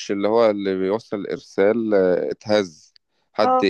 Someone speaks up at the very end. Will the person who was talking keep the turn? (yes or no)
yes